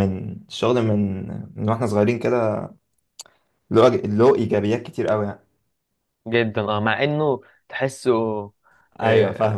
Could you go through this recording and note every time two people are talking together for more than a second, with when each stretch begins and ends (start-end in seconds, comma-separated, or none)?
none